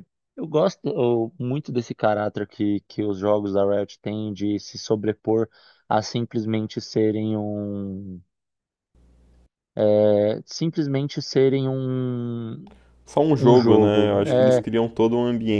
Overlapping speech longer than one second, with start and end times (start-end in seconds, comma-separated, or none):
13.4-14.6